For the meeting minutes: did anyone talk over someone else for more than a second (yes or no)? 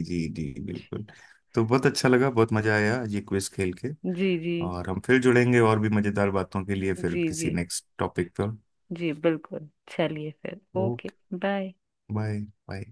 no